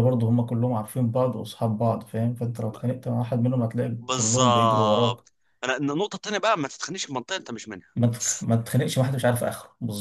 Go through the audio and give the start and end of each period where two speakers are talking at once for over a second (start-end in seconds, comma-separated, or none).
4.0-5.2